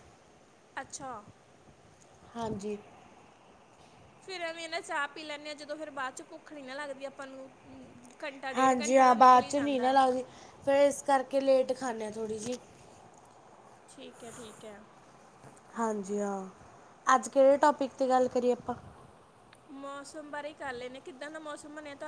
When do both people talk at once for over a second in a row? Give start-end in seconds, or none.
8.6-9.9